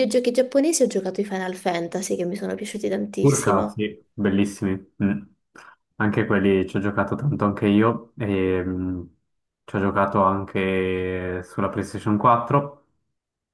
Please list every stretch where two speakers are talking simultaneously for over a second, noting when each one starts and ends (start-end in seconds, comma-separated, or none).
none